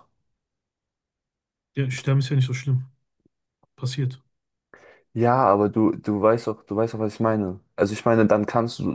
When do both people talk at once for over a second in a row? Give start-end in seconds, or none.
none